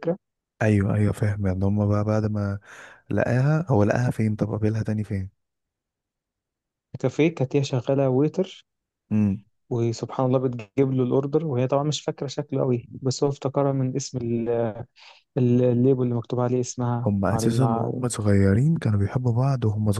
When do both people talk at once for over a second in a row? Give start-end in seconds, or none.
none